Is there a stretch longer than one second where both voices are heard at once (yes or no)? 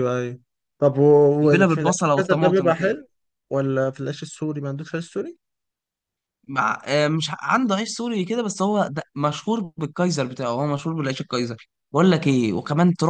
yes